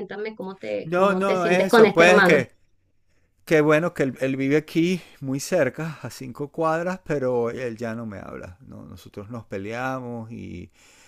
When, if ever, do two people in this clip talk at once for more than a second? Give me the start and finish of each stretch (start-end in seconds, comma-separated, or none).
0.8-2.4